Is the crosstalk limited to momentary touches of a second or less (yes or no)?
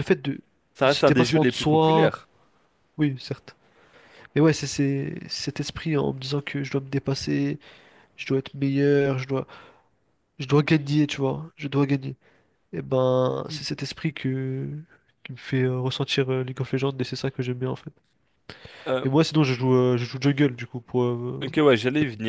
no